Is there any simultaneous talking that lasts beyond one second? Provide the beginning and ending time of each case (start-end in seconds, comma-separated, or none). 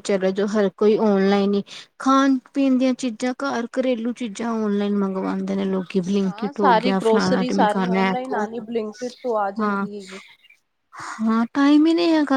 6.2-8.4